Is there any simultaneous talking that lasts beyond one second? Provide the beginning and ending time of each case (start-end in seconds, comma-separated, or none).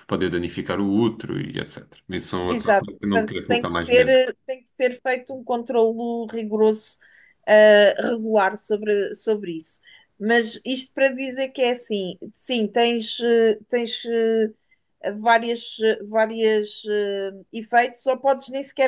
2.5-4.2